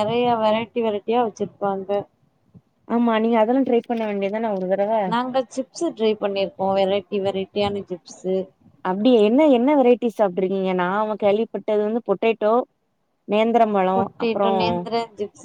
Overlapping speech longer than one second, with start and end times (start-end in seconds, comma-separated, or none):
none